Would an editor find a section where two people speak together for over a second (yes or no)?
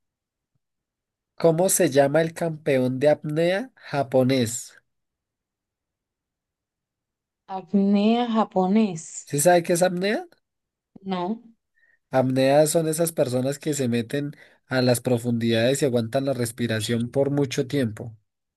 no